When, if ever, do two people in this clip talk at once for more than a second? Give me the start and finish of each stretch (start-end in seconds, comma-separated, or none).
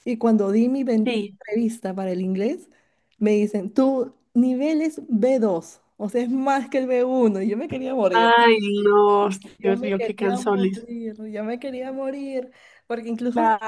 9.6-10.8